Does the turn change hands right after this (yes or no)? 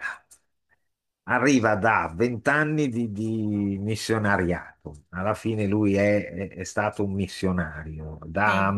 no